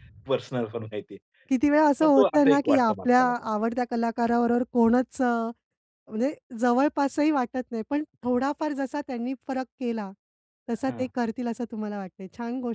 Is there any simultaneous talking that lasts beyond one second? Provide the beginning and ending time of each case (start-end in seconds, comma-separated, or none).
2.0-3.5